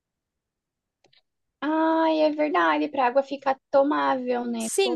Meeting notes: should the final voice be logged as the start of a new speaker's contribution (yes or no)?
yes